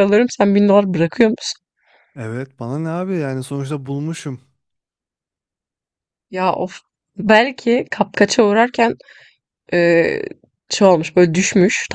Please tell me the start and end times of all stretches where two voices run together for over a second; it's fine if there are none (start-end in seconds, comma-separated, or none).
none